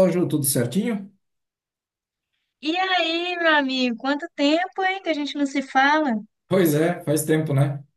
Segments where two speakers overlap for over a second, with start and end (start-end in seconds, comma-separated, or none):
none